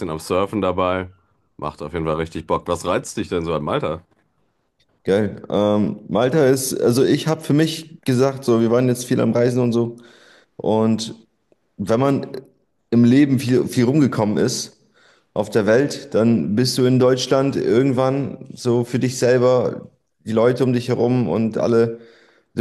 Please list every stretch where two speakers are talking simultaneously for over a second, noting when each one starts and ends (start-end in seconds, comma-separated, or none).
none